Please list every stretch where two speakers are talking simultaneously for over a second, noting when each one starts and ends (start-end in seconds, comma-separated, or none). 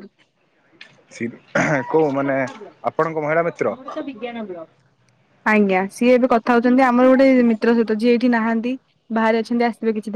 none